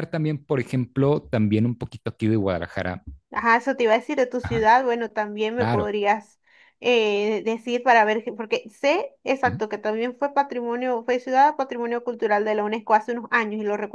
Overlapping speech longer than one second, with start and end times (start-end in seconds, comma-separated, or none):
none